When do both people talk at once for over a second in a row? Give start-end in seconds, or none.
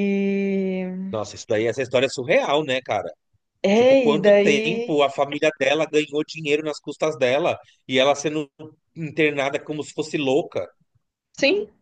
3.7-5.0